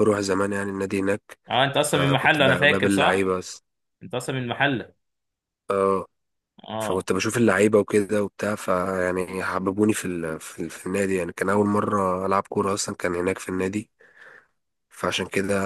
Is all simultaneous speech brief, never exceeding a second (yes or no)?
no